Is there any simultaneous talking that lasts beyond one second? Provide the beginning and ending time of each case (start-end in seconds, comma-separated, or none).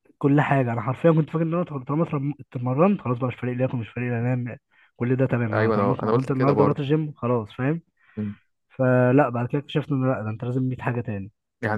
5.5-6.8